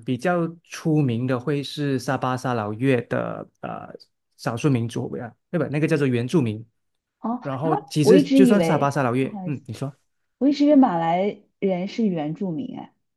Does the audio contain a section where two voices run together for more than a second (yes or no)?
yes